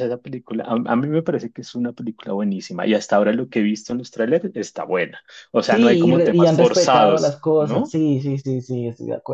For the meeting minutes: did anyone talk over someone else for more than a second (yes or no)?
yes